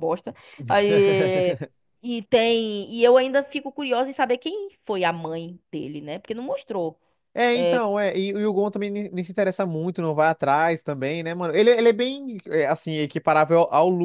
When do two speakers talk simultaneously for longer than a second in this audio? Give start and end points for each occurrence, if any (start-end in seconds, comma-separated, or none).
none